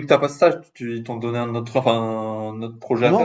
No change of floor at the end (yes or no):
no